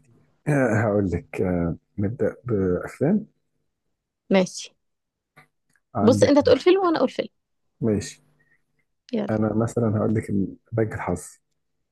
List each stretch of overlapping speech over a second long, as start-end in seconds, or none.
none